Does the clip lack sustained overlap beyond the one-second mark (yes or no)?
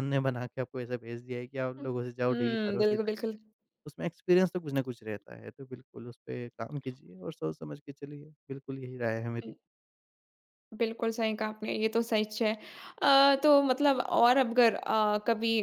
no